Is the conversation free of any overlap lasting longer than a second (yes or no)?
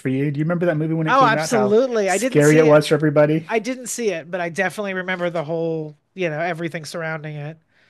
no